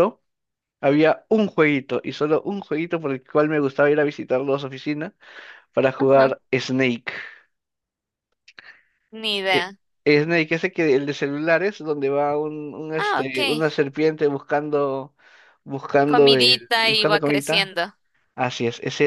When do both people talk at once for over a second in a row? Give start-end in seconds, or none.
16.1-17.7